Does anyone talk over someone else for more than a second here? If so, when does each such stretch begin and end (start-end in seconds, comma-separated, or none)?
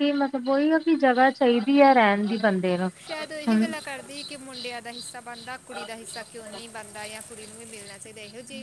none